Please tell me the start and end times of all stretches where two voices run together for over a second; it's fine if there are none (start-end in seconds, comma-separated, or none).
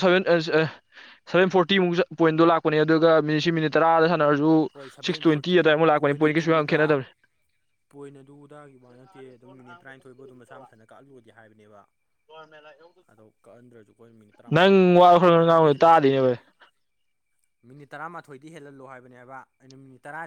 14.6-16.3